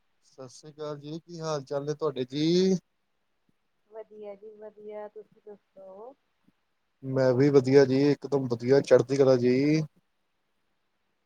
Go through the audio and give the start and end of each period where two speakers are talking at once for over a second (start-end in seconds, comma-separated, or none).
none